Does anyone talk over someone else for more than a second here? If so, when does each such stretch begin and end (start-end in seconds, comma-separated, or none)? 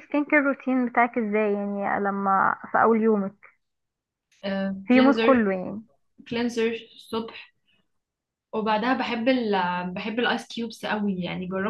none